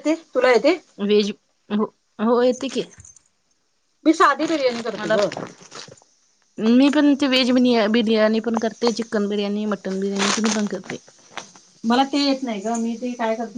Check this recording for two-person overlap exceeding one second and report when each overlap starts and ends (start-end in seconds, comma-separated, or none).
none